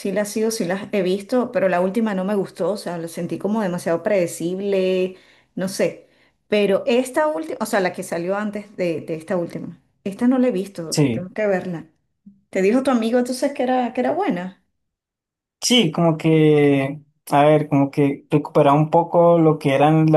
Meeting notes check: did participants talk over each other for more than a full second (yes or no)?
no